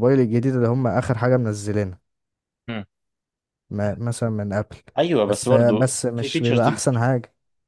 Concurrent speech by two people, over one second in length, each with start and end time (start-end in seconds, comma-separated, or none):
5.3-6.7